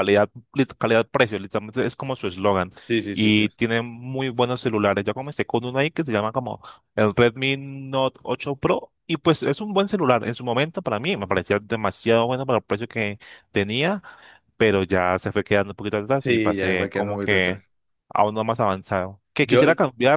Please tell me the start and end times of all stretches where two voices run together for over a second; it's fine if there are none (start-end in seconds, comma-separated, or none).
16.1-17.6